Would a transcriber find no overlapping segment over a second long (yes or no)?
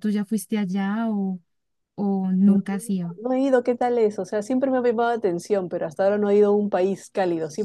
yes